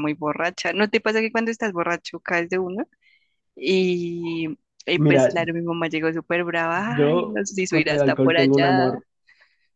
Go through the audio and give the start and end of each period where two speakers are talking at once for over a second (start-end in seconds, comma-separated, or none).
6.9-8.9